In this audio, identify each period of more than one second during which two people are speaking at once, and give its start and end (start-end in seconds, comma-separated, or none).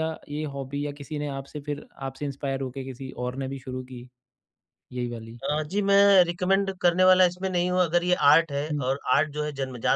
none